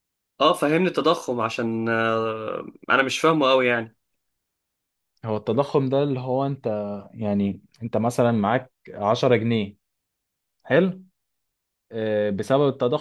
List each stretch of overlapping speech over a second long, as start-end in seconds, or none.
none